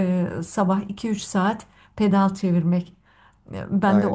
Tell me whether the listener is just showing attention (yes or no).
no